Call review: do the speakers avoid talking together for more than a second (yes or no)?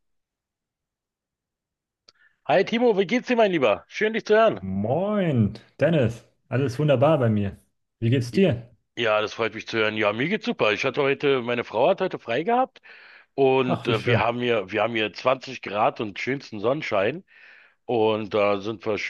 yes